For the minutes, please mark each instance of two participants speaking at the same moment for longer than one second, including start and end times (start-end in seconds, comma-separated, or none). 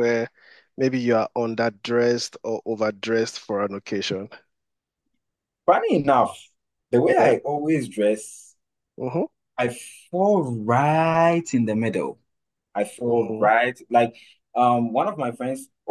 none